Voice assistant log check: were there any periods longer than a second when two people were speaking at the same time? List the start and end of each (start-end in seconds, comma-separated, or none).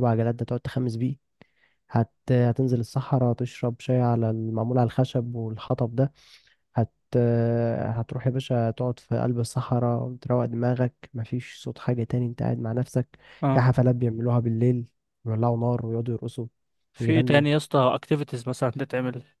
none